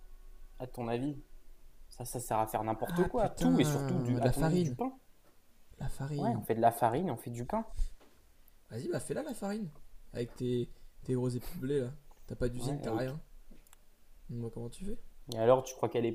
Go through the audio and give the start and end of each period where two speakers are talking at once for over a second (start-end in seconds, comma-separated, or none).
2.9-4.8